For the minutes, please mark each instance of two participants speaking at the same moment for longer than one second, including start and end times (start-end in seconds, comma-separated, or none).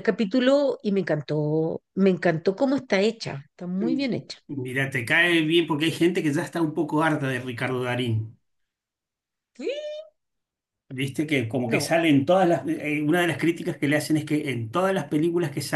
none